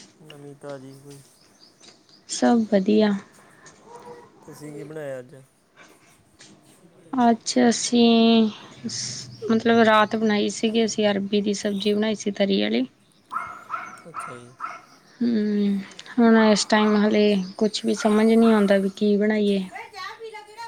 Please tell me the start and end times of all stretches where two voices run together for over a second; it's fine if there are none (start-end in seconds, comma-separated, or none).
none